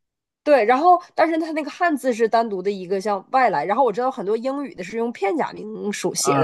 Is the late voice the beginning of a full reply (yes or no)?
yes